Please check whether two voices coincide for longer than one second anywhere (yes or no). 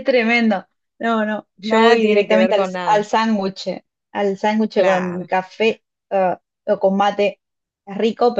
yes